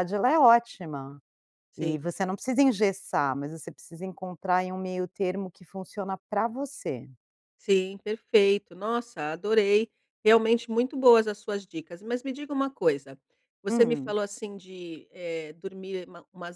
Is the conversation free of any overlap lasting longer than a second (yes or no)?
yes